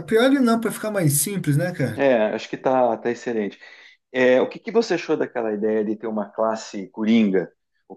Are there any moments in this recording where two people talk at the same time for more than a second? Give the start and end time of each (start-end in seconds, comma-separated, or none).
none